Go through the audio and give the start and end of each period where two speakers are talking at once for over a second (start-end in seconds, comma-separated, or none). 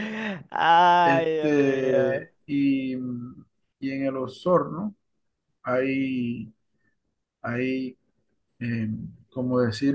1.0-2.3